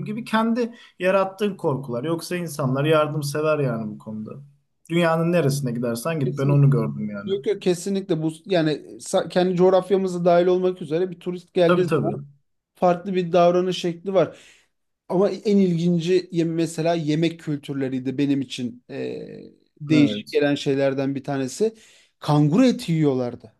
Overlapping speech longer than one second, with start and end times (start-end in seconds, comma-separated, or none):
none